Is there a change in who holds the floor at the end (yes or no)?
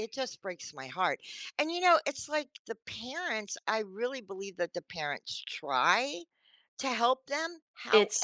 no